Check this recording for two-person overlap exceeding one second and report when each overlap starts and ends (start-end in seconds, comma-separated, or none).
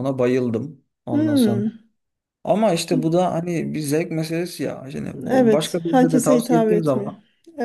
5.3-7.1